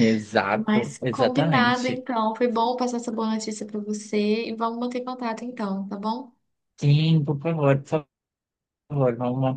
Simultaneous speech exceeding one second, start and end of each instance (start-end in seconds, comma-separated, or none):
0.5-2.1